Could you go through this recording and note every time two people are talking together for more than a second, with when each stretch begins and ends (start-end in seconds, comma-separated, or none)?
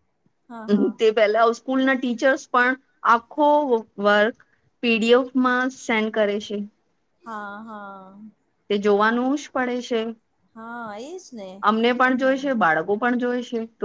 none